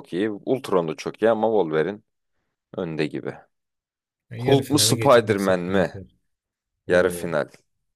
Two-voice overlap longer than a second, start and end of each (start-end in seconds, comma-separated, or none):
4.4-5.9